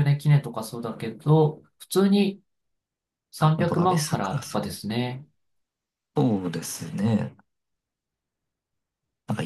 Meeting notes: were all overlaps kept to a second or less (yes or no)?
no